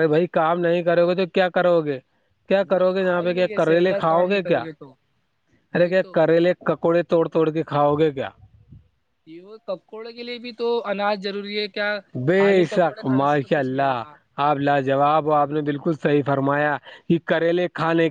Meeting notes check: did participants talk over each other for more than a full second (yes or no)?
yes